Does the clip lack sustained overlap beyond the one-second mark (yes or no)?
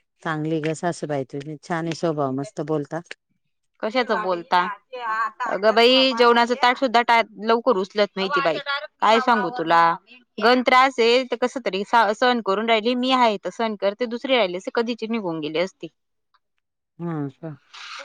yes